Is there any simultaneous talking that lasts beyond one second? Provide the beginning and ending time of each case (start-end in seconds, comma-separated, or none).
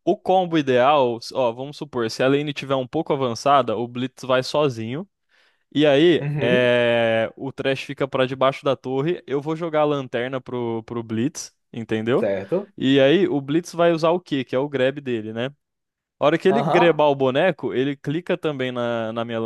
none